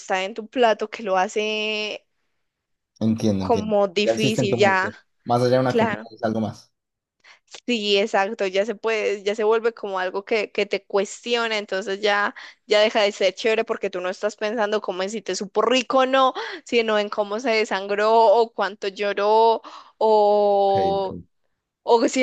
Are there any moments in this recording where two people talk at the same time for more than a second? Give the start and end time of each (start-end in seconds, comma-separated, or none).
3.4-4.9